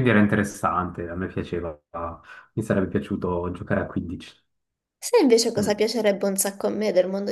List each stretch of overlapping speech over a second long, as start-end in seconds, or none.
none